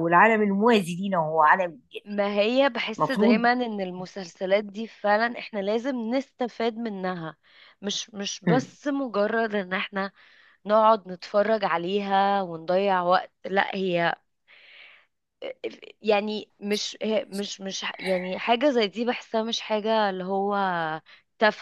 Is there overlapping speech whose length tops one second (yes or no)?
no